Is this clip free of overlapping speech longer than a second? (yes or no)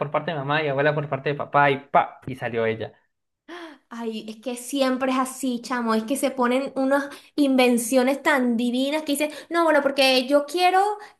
yes